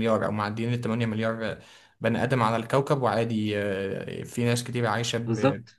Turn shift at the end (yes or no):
yes